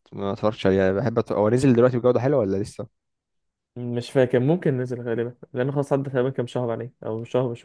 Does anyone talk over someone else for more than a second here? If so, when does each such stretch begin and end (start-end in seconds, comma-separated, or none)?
none